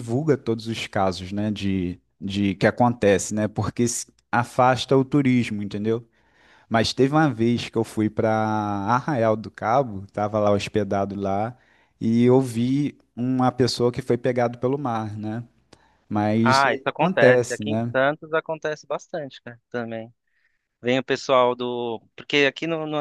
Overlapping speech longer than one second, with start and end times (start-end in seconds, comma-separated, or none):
16.4-17.9